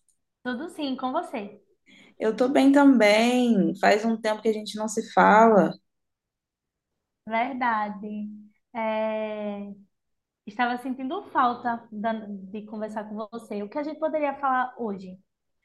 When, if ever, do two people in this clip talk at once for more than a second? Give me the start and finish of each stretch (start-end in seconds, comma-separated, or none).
none